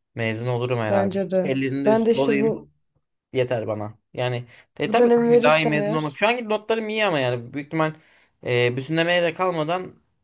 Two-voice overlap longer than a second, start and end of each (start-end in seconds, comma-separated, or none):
0.9-2.6, 4.8-6.2